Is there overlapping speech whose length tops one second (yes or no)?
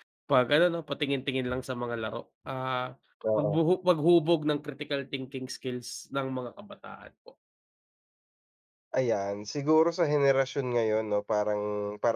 no